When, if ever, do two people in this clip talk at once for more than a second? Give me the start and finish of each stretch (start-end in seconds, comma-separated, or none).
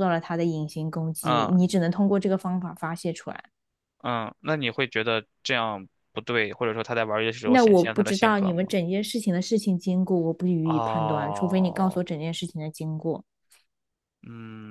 7.4-8.7, 10.6-12.0